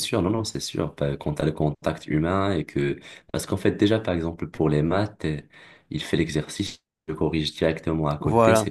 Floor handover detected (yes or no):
no